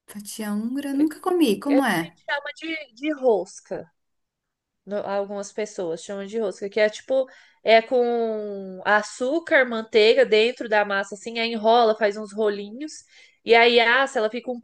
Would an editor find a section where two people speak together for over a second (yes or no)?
no